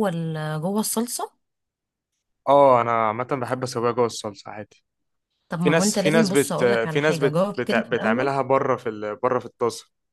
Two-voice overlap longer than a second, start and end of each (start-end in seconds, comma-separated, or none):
5.6-8.3